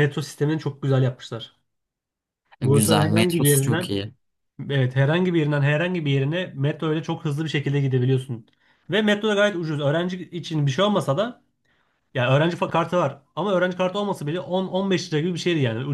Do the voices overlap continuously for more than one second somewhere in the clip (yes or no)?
yes